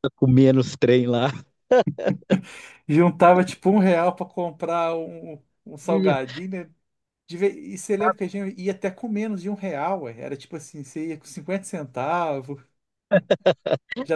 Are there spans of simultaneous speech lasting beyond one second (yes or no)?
no